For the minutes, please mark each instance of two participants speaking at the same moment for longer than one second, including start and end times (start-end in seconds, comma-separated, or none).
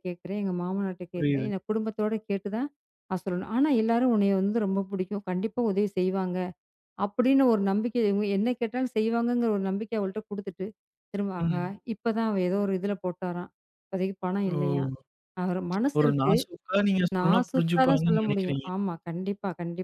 17.2-18.7